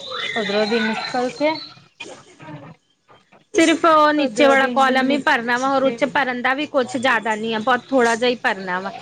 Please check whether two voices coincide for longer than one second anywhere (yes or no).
yes